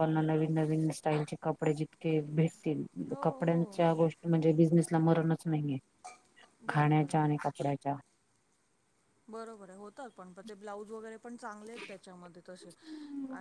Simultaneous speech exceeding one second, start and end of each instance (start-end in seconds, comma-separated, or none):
none